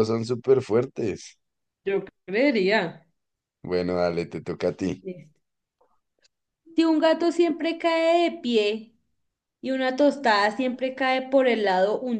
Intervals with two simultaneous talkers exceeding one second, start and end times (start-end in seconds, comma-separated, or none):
none